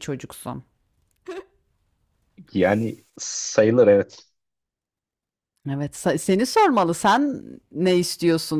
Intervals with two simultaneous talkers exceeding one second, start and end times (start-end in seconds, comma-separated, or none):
none